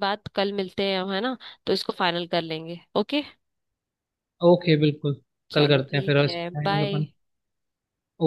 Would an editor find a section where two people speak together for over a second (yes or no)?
yes